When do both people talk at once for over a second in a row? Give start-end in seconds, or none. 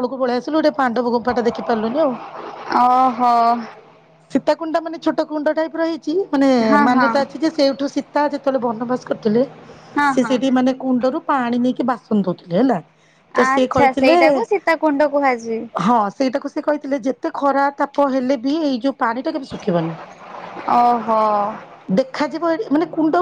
none